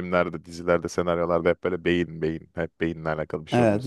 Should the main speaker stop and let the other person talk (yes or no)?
yes